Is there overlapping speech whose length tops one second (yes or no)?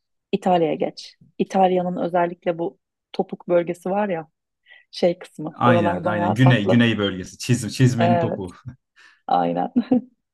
yes